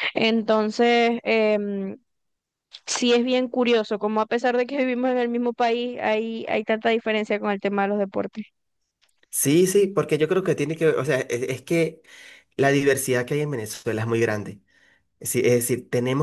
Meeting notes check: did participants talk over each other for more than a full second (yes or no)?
no